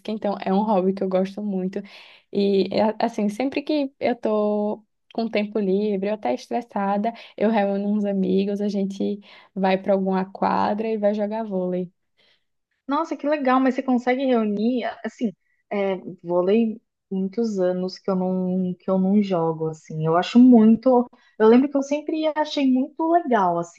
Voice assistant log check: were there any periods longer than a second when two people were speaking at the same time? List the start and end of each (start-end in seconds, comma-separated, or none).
none